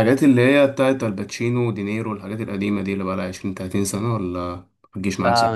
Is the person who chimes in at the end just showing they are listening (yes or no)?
no